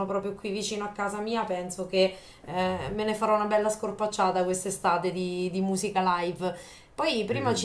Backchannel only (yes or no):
yes